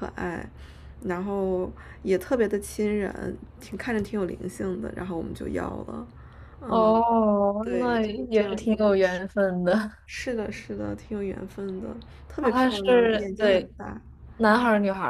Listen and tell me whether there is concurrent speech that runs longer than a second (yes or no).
yes